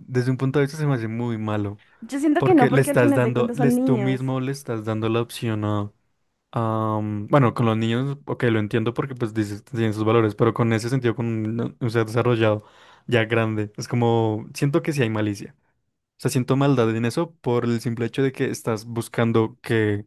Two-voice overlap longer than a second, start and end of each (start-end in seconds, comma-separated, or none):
2.4-4.2